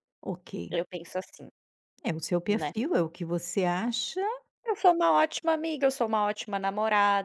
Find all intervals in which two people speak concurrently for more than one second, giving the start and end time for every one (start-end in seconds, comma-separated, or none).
none